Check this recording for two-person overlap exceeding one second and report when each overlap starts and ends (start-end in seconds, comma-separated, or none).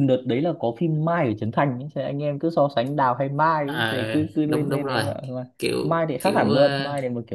3.6-5.0